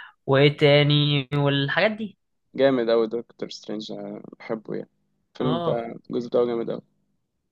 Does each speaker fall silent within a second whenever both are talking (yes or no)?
yes